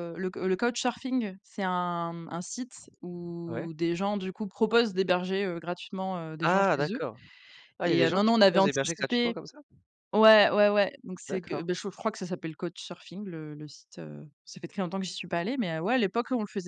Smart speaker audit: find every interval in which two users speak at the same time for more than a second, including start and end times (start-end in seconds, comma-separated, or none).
7.9-9.4